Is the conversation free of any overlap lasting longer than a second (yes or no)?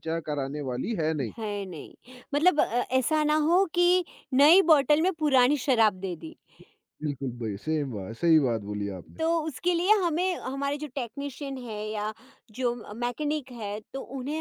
yes